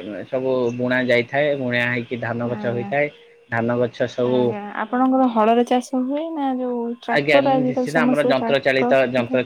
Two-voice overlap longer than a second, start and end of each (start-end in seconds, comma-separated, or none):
7.2-8.9